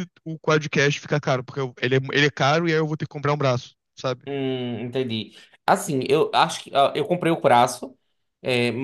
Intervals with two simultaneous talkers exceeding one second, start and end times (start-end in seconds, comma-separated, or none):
none